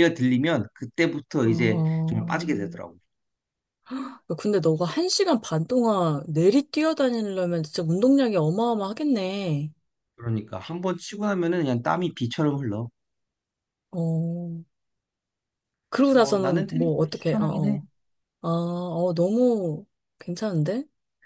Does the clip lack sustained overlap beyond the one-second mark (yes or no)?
no